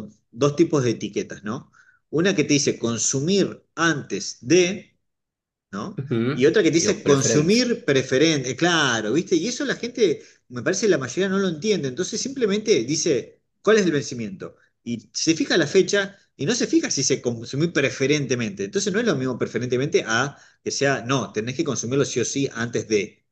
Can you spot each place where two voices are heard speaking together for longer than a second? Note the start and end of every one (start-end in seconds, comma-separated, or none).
6.0-7.6